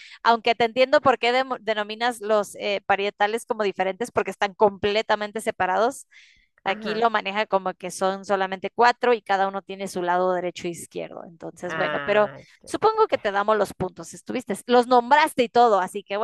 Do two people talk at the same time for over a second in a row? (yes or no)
yes